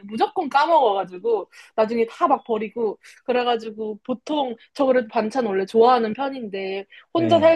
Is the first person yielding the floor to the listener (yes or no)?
no